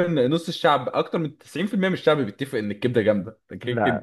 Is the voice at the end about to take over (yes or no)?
no